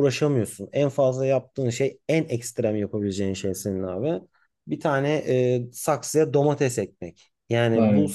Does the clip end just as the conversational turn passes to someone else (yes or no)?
no